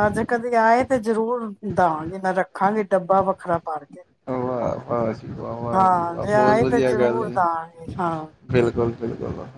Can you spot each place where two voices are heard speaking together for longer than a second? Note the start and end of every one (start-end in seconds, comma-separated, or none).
5.8-7.9